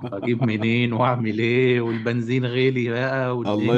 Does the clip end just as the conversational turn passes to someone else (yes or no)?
yes